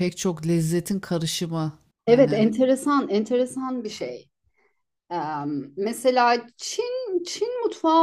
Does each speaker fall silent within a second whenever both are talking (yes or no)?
yes